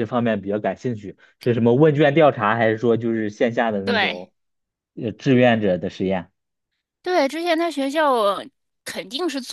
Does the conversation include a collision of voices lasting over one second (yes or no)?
no